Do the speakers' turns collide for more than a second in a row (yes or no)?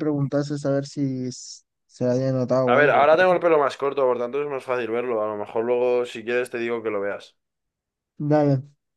no